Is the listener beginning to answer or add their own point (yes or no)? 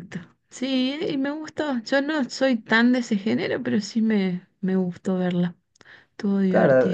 yes